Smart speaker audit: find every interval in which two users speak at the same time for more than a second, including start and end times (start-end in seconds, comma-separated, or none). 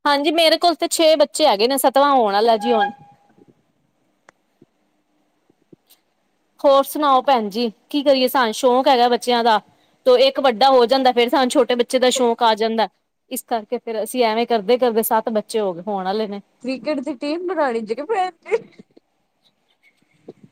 none